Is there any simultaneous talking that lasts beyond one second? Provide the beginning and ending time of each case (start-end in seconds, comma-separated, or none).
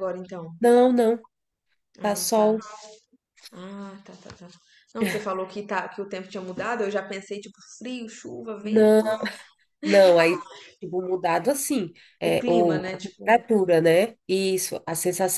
12.2-13.4